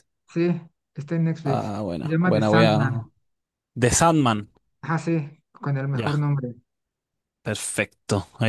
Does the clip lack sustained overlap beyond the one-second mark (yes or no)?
no